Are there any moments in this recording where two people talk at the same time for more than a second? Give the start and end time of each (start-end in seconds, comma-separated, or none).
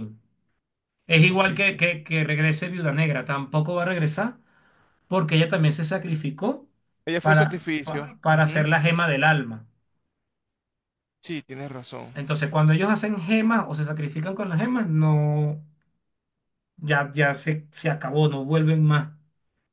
7.2-8.7